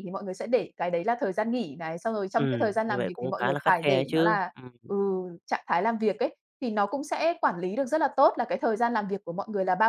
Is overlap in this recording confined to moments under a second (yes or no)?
no